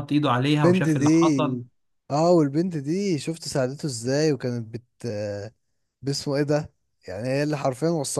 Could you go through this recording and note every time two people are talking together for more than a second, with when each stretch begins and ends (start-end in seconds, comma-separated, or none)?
none